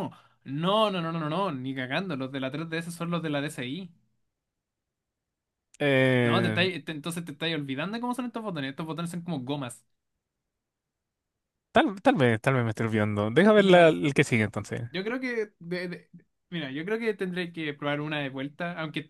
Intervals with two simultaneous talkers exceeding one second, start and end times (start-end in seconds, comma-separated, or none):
none